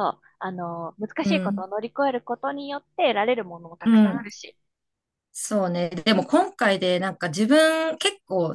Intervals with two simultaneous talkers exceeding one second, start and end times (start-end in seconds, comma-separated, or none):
none